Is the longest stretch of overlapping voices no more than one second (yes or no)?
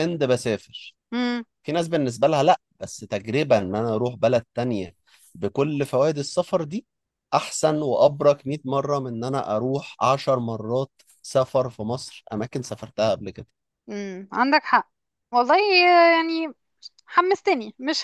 yes